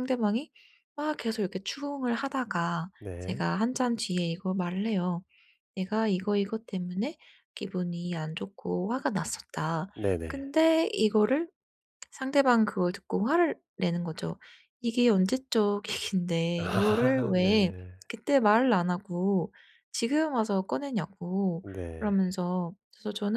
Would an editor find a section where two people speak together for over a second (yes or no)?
yes